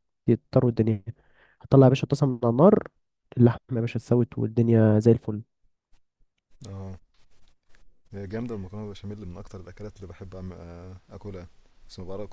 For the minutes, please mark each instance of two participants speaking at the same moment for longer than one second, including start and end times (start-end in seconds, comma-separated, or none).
none